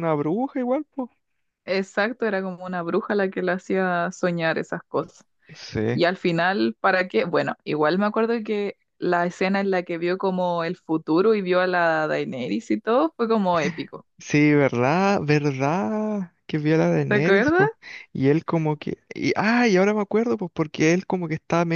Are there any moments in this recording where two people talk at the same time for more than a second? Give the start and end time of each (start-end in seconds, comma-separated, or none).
none